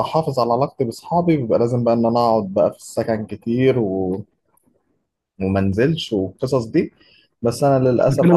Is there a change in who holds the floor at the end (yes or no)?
yes